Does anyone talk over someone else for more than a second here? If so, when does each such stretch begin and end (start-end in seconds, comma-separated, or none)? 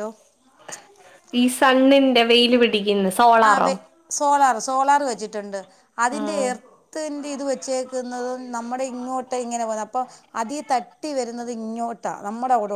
none